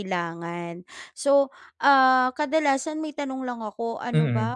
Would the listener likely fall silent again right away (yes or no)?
yes